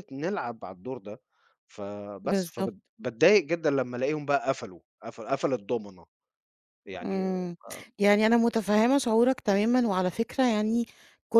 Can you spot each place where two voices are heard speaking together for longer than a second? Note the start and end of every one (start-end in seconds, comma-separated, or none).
none